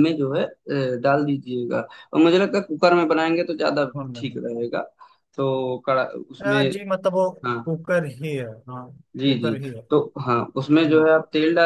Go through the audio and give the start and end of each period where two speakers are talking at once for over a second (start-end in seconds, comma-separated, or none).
none